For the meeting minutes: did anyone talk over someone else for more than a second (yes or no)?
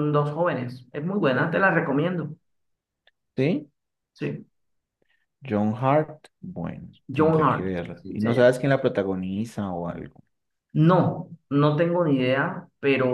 yes